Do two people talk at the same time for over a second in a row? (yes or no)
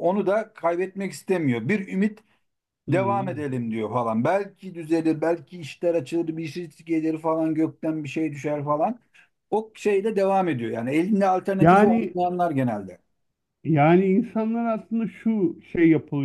no